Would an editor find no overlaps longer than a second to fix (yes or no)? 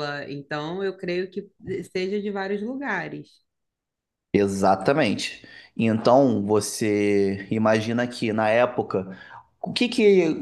yes